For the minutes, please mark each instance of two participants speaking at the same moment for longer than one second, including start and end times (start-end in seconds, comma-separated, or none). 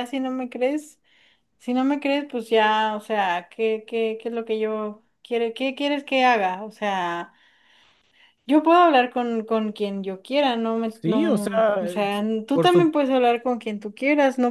10.9-12.9